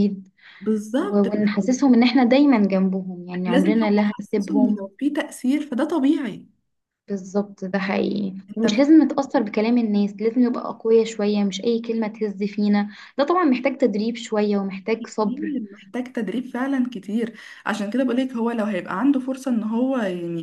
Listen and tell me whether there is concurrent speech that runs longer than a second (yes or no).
yes